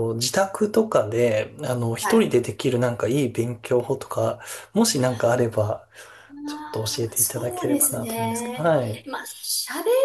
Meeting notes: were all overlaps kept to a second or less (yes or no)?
no